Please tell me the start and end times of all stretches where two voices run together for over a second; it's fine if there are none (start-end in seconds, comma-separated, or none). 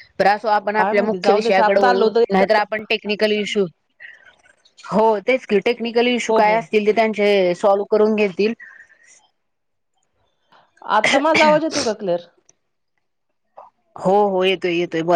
0.8-2.6